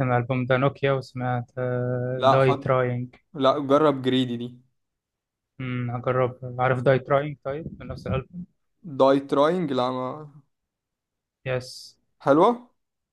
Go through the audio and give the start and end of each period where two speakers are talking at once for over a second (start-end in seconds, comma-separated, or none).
none